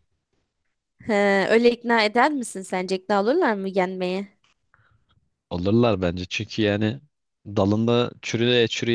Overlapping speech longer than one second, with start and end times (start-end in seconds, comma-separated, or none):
none